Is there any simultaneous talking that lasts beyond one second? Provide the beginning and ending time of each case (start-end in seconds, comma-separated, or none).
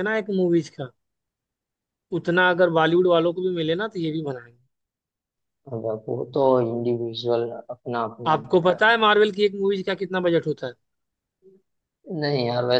none